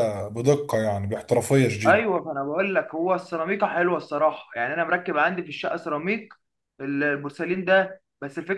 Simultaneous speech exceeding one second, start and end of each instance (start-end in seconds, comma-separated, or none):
none